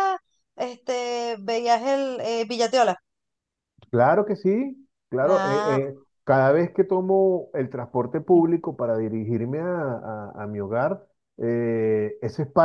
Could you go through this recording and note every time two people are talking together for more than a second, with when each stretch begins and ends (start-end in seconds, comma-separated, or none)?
none